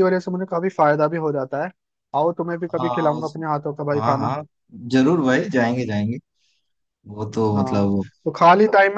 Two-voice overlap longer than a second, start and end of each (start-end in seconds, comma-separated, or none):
none